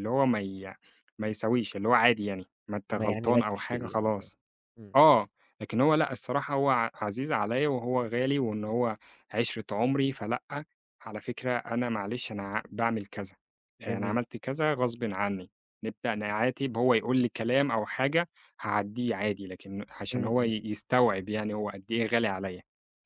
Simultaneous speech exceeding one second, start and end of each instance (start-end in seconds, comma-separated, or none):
2.9-4.3